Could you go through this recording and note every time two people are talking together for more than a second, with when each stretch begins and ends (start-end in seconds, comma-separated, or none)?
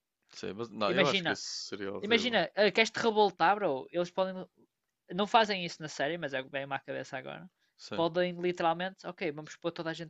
none